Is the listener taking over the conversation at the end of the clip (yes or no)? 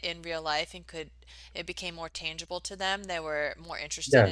no